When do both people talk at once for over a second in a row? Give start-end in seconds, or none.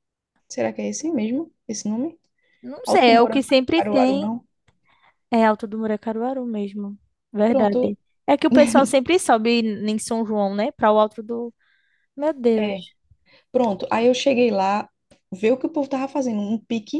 2.9-4.3